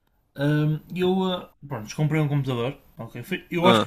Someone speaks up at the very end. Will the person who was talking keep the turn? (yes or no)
yes